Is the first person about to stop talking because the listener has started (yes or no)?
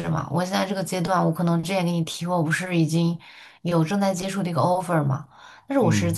no